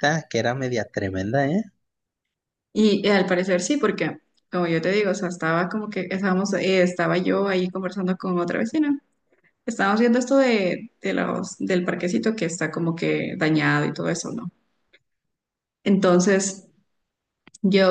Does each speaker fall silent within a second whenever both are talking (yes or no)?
yes